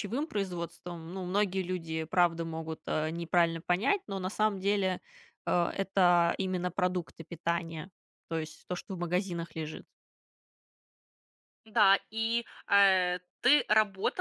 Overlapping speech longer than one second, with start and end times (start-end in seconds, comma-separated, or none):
none